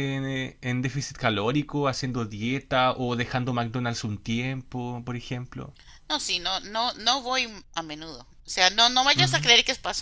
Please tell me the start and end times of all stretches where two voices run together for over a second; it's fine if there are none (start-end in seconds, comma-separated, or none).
none